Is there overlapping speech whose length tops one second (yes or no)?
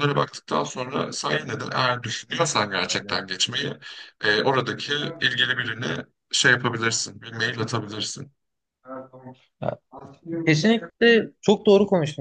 no